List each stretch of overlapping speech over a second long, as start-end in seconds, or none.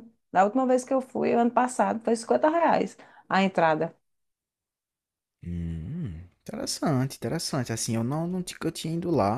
none